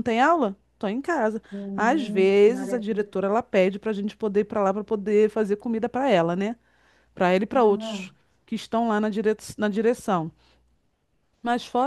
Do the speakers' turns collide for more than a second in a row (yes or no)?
yes